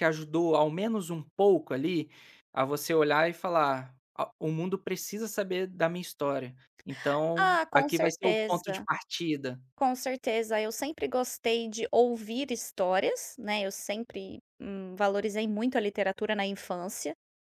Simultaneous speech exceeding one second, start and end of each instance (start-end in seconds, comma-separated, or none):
7.4-8.8